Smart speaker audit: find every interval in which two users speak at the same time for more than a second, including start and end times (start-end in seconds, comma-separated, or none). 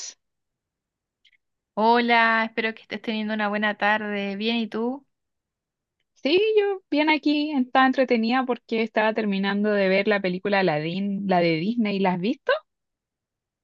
none